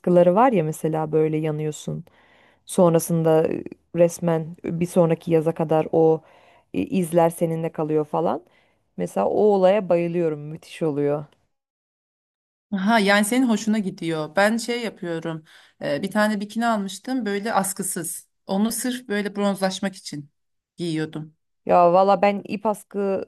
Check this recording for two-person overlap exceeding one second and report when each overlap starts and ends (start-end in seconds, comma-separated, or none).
none